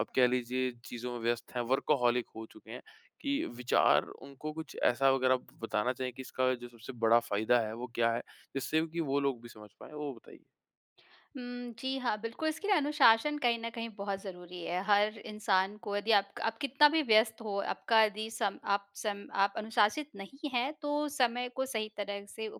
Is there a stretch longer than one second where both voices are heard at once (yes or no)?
no